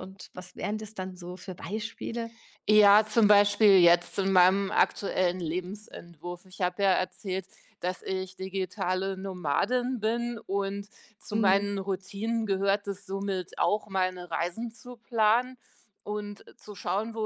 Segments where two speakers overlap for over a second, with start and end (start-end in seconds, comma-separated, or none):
none